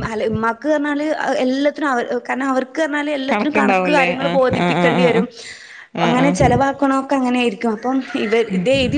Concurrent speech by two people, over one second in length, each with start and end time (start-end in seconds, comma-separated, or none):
3.3-5.3